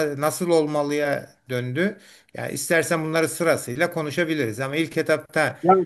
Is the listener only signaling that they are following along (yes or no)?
no